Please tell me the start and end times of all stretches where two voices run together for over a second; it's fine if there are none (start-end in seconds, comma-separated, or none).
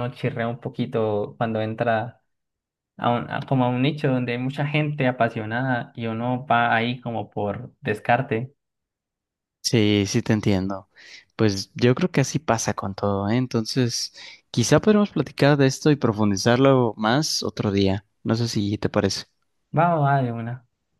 none